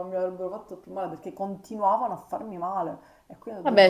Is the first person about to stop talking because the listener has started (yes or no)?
yes